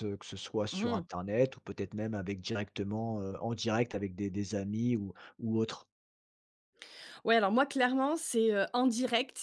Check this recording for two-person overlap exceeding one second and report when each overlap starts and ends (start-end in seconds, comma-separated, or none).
none